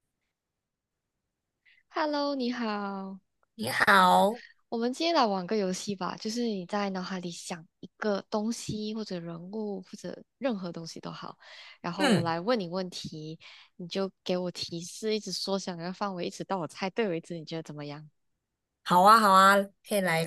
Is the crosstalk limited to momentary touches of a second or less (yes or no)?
yes